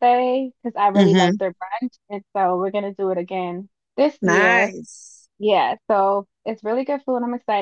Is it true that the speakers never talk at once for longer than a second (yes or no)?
yes